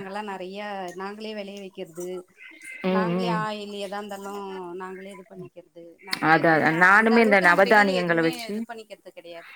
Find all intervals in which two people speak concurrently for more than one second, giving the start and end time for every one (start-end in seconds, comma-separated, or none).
6.3-8.5